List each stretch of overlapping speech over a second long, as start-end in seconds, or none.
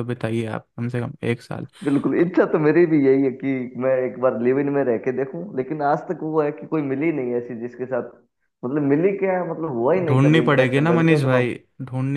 10.1-11.5